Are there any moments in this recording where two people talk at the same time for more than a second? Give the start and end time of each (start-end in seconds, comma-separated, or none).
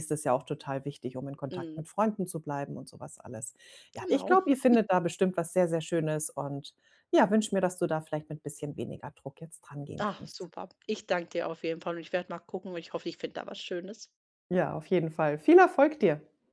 none